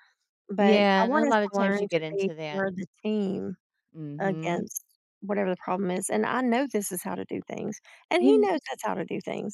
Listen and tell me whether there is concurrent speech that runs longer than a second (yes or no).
yes